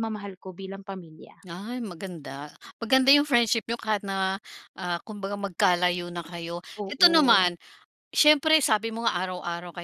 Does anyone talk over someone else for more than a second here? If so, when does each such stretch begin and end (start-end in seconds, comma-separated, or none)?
none